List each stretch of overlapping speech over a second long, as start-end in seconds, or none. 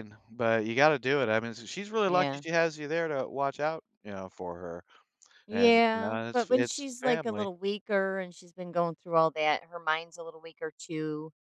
5.5-7.5